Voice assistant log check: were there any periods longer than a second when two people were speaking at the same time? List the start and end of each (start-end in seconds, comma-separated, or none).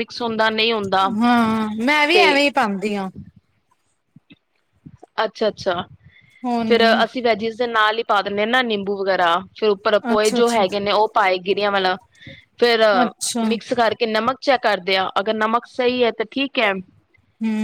none